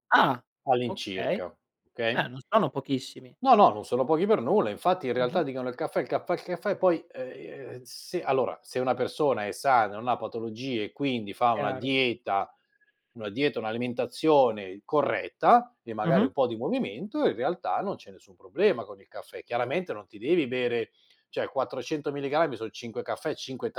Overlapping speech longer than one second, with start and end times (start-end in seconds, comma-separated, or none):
none